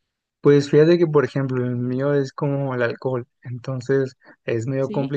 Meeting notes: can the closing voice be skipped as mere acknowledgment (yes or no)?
yes